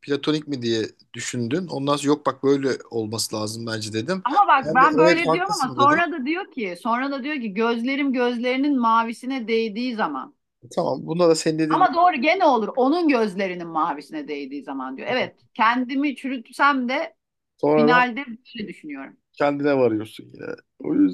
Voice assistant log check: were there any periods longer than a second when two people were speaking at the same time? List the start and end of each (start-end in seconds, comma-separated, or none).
4.6-6.0